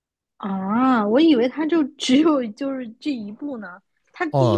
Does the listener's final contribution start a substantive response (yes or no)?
yes